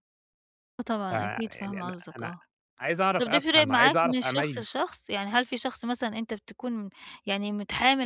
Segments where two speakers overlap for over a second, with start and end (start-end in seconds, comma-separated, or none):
1.1-2.3, 3.2-4.9